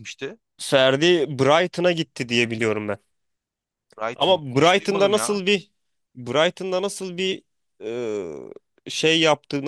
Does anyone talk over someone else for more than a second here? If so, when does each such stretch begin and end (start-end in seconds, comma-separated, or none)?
4.2-5.4